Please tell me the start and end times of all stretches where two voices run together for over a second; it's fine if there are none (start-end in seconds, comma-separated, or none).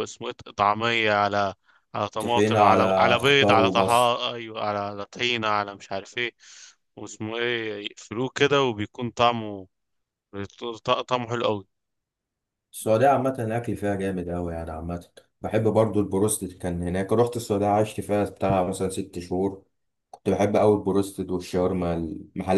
2.2-4.2